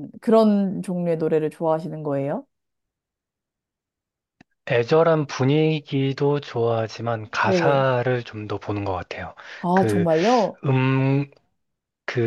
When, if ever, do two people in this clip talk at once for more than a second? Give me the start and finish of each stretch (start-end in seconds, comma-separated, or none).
none